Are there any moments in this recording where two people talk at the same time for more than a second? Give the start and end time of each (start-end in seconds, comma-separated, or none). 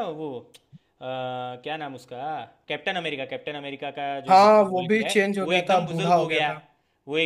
4.3-6.5